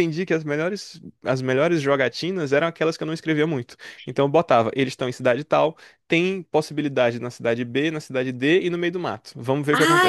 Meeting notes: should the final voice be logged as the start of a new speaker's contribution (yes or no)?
yes